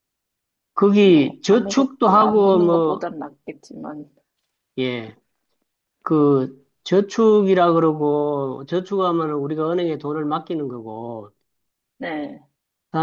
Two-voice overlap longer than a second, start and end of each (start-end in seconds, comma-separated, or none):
1.0-3.1